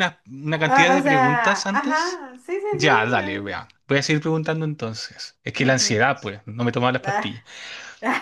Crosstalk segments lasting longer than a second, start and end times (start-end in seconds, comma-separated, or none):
0.6-2.2